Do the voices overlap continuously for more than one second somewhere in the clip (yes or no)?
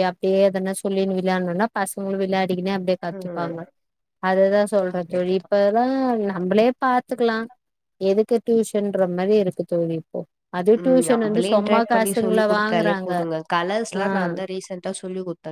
yes